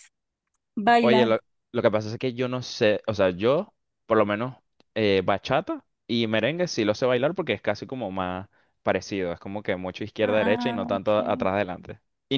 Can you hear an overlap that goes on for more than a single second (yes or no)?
yes